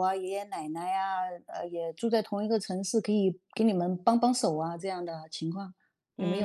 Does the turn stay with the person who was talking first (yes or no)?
no